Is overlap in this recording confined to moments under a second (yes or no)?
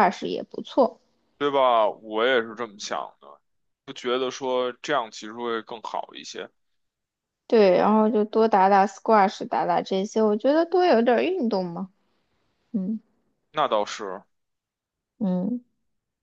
yes